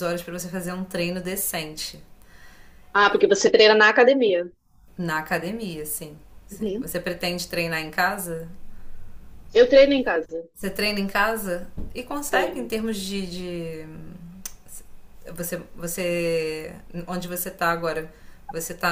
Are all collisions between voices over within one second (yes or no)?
yes